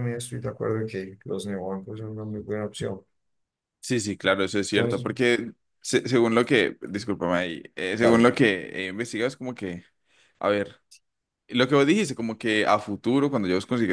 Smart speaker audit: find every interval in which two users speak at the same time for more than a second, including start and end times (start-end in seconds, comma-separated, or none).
none